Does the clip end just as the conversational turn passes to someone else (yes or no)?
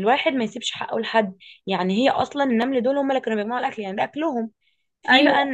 no